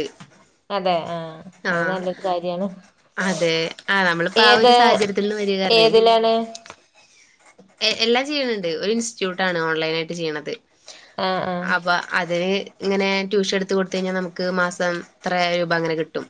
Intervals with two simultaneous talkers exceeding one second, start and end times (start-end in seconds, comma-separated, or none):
none